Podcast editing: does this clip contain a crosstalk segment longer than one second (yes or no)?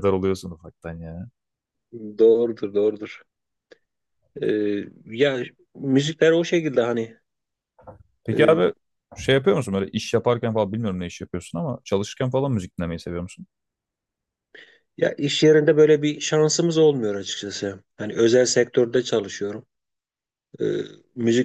no